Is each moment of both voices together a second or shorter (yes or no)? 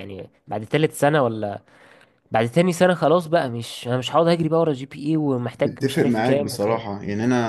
no